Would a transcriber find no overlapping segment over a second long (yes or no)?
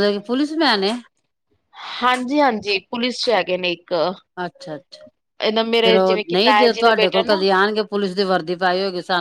no